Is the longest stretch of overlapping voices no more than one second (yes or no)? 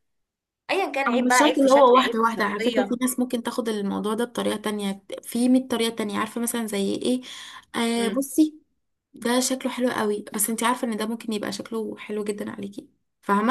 no